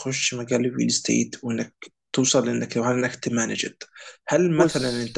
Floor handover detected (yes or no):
no